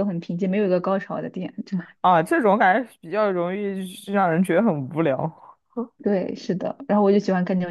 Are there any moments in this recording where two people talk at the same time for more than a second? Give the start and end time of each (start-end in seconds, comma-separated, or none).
none